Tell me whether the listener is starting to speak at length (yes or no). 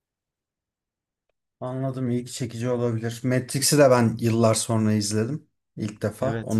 yes